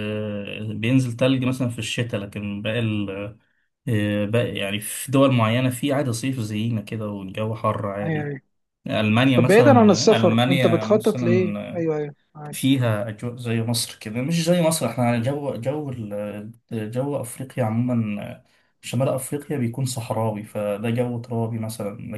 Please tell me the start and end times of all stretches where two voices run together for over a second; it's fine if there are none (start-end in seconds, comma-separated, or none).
9.4-11.8